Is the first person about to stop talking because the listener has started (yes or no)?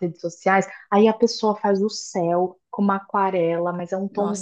no